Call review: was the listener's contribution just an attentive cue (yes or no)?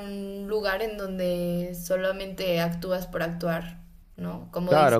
no